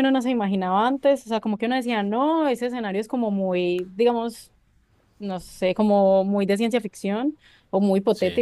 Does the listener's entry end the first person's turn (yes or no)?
no